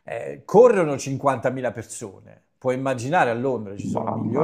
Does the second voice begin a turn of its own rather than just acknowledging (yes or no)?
no